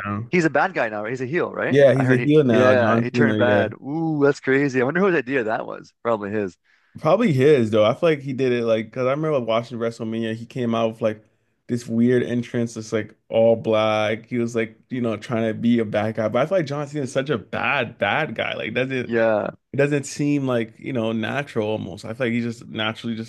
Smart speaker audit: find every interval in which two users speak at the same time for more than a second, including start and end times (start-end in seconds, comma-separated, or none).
1.7-3.6